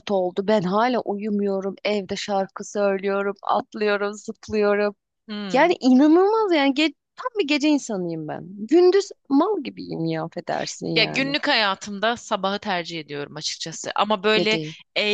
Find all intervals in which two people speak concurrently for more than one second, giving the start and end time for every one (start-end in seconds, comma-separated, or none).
none